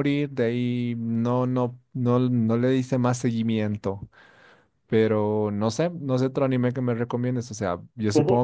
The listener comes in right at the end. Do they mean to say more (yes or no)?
no